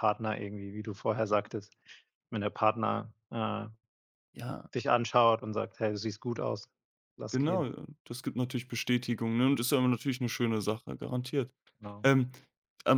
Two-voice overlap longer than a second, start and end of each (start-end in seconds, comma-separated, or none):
none